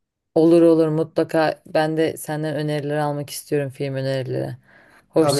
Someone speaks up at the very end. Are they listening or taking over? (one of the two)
taking over